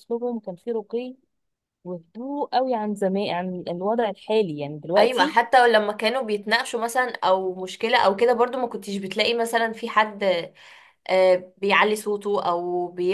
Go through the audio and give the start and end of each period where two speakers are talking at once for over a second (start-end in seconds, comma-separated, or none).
none